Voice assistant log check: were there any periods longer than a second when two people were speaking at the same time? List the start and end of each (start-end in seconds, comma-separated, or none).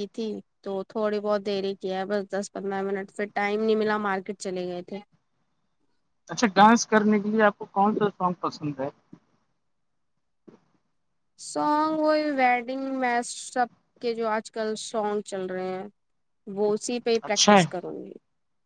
none